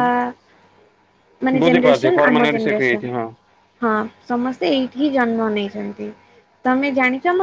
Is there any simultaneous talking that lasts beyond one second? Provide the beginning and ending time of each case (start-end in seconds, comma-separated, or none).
1.6-3.1